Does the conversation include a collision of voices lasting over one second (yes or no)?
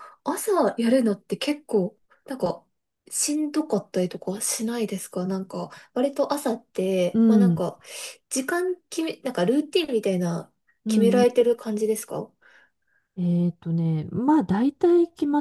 no